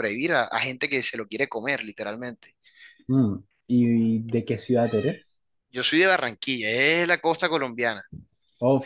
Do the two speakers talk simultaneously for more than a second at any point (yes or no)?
no